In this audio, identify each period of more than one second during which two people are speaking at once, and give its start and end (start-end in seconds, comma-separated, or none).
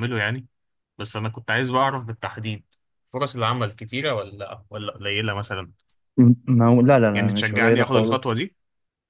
7.1-8.4